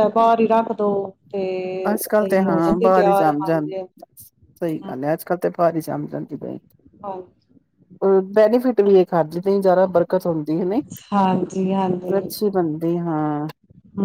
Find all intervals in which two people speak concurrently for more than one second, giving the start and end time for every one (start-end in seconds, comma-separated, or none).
2.2-3.7